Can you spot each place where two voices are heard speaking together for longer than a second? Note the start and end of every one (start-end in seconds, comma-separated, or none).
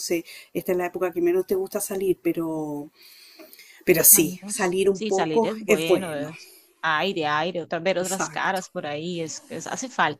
4.1-6.3